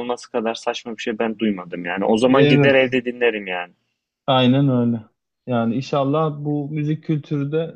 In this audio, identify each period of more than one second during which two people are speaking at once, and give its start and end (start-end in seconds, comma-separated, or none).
none